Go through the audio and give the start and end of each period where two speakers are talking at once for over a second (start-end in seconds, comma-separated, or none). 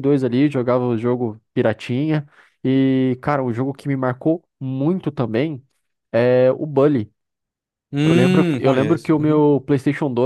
8.0-9.4